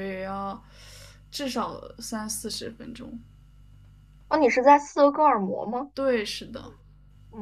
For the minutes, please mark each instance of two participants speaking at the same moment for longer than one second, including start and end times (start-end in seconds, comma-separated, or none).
none